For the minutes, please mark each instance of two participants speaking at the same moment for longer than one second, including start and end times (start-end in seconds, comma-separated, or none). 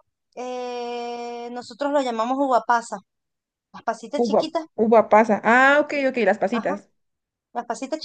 none